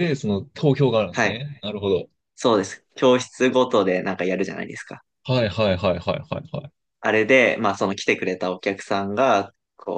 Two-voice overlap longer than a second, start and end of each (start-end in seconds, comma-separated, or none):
none